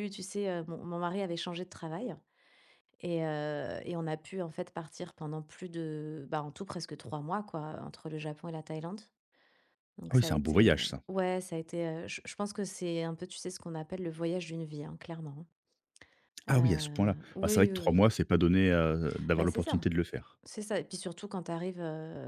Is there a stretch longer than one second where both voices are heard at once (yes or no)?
yes